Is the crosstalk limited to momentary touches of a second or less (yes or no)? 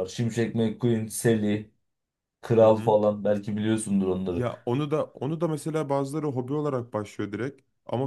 yes